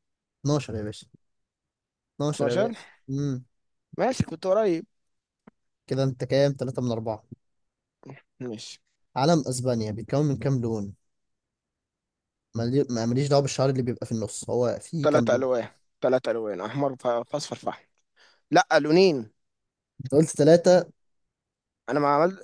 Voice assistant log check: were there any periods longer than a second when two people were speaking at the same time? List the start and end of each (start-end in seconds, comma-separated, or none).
none